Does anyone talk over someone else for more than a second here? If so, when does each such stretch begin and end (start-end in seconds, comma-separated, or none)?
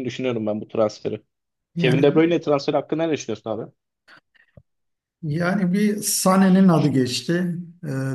none